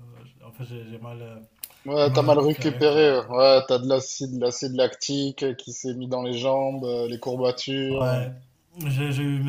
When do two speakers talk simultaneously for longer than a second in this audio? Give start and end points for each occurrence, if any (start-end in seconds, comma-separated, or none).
2.0-3.2